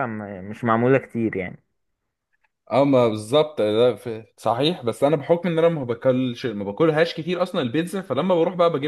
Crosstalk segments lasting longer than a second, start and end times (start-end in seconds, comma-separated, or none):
none